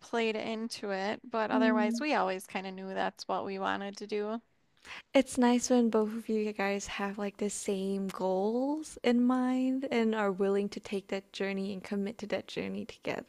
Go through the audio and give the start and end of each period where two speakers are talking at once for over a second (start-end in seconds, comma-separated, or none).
none